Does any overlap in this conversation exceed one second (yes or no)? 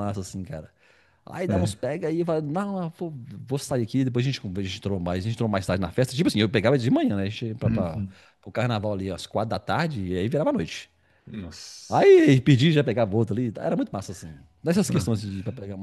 no